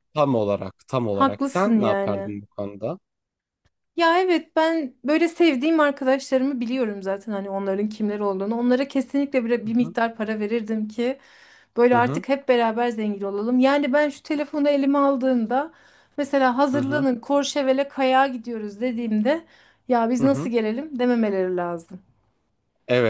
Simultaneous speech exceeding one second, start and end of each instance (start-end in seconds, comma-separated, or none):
1.1-2.4